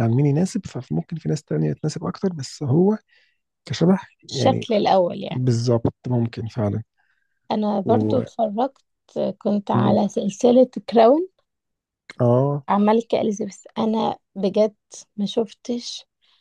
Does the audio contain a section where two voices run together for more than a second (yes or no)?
no